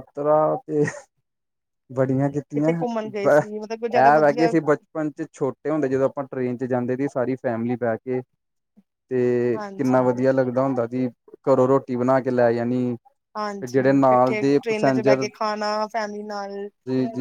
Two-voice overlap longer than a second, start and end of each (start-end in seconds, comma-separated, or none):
3.3-4.5